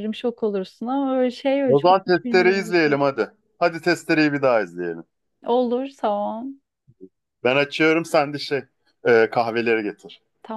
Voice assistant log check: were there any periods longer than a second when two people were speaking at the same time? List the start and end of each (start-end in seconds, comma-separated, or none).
1.6-2.9